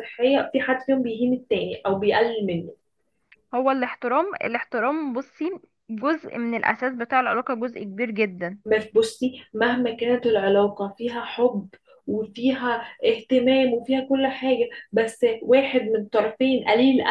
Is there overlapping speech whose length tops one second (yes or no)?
no